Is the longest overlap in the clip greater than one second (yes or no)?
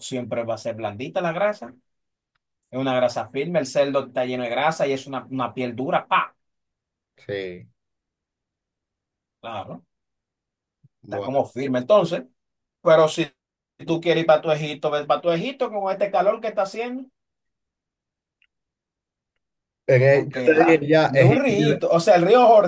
yes